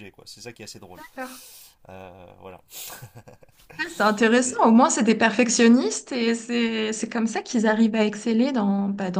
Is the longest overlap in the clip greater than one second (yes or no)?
no